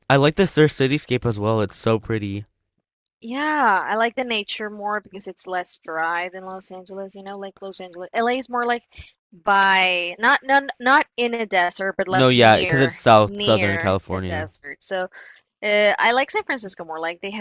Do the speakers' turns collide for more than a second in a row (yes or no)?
yes